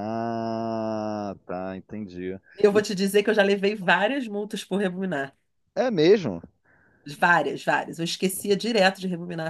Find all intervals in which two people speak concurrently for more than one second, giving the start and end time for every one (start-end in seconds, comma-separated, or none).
none